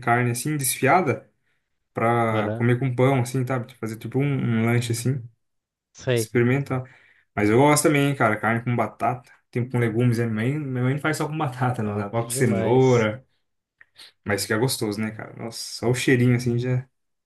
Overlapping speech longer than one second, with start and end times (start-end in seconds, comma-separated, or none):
11.8-13.1